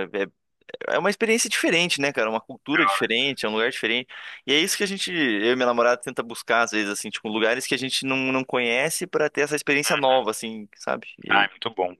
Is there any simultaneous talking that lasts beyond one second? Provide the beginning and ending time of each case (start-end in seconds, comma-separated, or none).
none